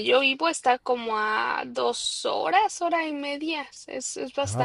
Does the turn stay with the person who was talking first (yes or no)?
no